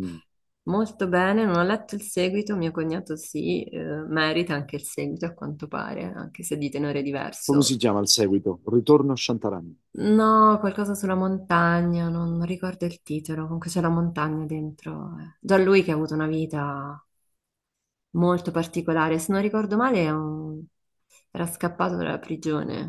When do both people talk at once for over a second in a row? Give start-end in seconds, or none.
none